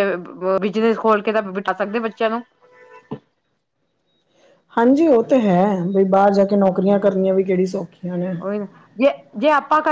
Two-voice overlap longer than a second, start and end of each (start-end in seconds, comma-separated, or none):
none